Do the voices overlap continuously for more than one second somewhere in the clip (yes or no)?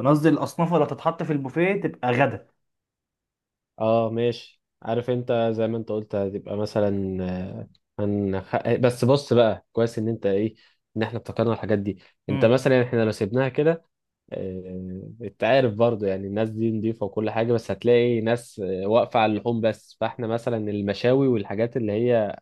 no